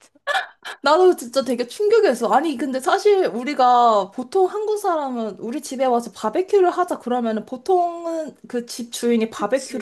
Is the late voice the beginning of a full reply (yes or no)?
no